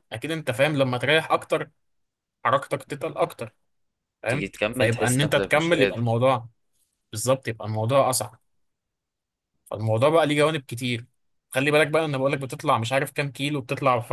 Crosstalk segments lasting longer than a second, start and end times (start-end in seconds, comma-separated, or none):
4.3-6.2